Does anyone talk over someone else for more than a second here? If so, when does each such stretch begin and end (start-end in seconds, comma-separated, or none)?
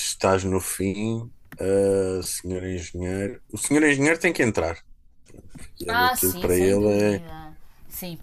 5.9-7.2